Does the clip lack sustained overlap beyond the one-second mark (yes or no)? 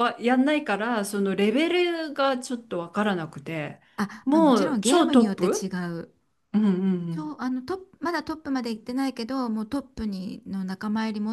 no